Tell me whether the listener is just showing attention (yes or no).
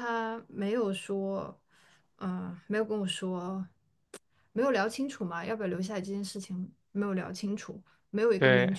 yes